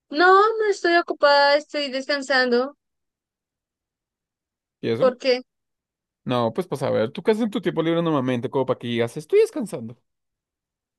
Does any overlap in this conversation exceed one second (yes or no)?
no